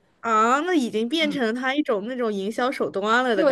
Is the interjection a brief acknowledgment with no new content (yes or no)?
no